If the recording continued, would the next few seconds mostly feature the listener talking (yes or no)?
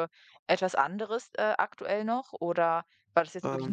no